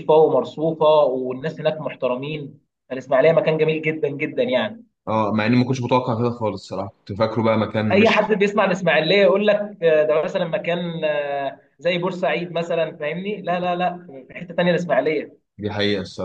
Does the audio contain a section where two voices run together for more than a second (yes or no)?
no